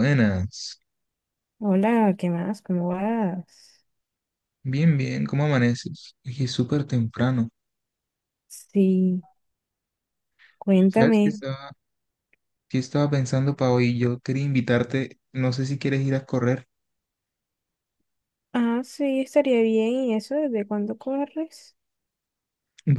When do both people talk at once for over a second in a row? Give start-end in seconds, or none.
none